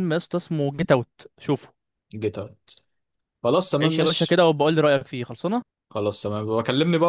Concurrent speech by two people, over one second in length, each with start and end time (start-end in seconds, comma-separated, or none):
none